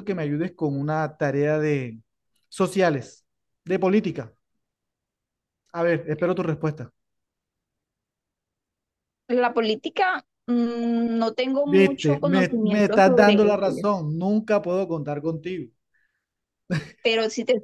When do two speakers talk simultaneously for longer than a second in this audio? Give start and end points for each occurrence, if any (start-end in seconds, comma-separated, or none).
11.6-13.8